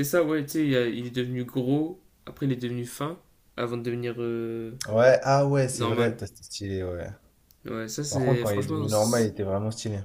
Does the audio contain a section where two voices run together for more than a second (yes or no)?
yes